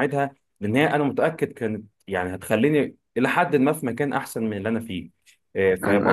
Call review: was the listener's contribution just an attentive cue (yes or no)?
no